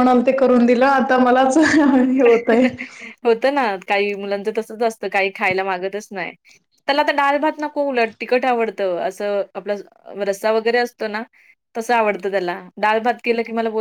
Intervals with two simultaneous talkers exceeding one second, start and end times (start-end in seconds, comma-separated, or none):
none